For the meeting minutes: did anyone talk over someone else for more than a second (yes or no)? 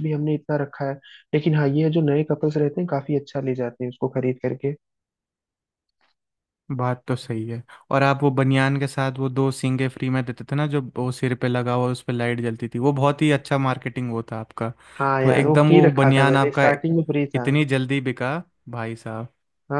yes